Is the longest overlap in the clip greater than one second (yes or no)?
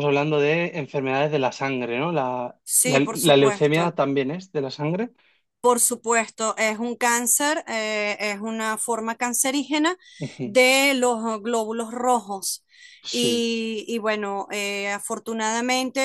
yes